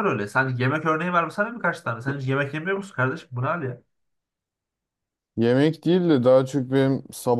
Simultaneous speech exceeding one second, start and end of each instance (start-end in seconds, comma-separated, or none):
none